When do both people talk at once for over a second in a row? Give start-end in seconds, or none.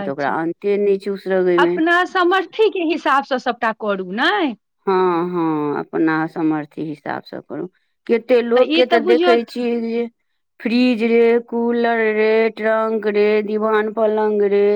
none